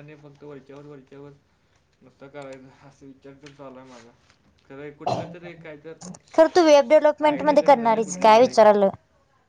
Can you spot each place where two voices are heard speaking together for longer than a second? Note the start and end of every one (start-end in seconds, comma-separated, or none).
7.3-8.6